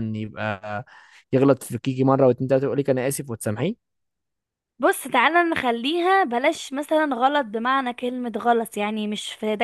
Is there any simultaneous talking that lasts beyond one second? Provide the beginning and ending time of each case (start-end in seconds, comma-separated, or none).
none